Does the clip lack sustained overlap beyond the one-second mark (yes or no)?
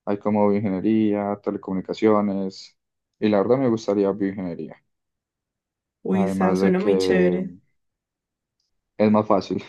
no